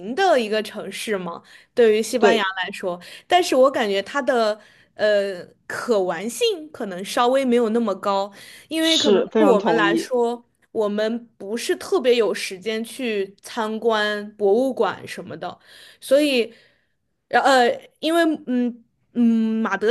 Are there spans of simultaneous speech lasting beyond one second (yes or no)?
yes